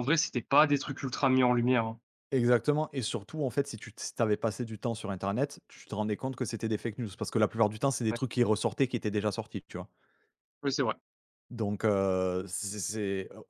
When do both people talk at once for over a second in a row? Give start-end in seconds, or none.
none